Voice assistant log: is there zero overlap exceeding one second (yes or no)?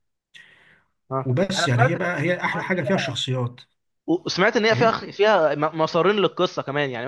no